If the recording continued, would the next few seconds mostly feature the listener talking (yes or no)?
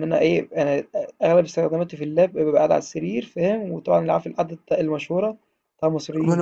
yes